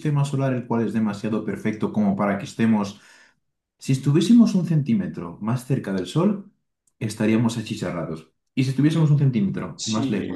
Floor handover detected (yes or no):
yes